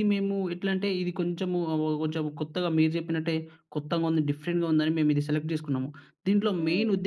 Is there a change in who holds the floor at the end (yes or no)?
no